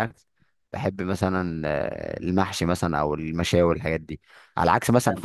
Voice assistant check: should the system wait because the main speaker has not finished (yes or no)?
yes